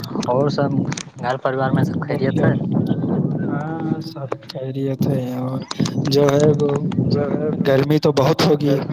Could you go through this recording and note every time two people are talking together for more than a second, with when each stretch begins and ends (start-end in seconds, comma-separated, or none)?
none